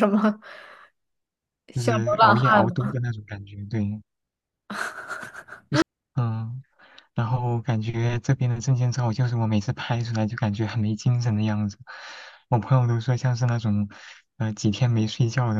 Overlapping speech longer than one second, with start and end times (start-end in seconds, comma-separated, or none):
1.8-3.0